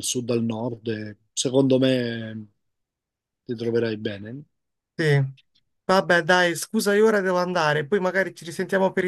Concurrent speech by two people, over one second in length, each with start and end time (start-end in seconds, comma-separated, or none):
none